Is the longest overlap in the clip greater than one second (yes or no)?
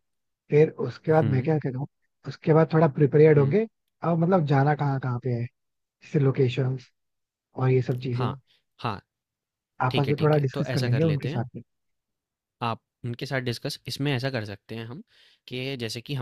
yes